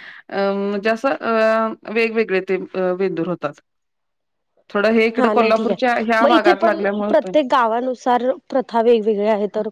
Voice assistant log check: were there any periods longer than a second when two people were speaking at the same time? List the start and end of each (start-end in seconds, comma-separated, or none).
5.2-7.3